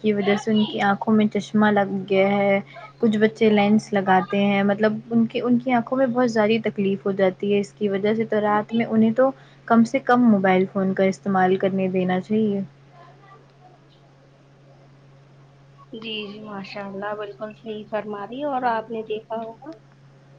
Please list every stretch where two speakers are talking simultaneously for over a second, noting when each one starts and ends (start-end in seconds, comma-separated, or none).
none